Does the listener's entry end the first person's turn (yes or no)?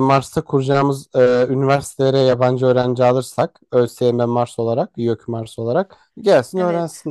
yes